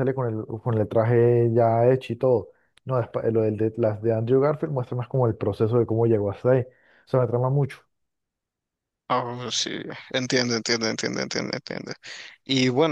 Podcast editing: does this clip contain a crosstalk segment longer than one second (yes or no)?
no